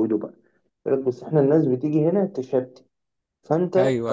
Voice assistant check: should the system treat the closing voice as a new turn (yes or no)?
no